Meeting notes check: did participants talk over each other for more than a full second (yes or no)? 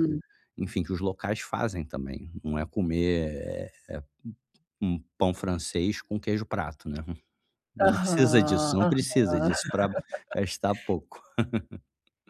yes